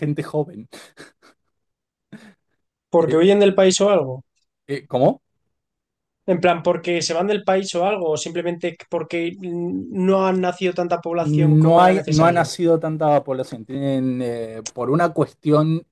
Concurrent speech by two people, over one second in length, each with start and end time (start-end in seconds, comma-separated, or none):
11.1-12.5